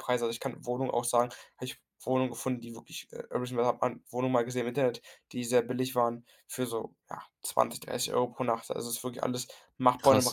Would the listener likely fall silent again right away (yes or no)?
yes